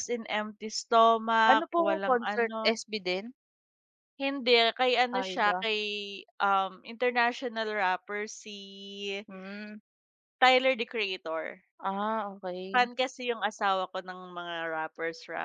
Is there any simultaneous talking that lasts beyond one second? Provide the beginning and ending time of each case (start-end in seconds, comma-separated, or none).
1.5-2.8